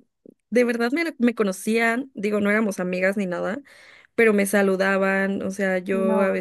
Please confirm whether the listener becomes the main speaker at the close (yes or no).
no